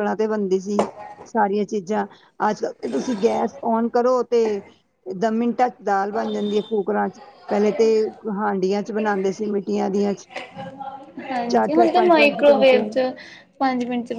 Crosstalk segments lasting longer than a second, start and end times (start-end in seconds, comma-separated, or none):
11.5-12.8